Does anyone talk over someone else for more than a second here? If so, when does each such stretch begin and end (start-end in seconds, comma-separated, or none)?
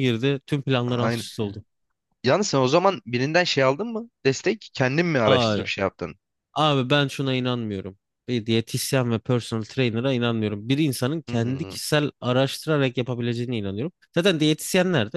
none